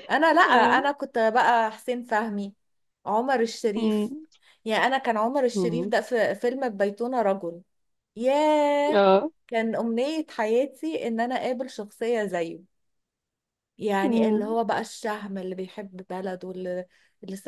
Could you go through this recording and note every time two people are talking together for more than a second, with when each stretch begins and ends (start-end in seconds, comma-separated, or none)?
none